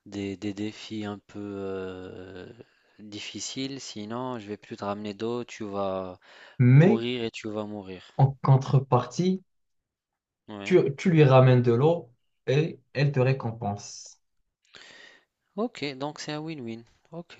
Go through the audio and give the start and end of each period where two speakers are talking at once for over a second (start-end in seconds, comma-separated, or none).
none